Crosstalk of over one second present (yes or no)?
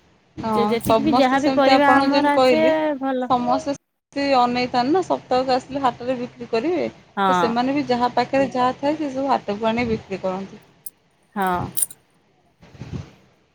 yes